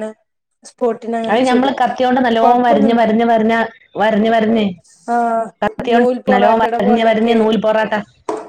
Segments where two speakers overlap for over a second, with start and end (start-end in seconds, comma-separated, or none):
5.9-7.4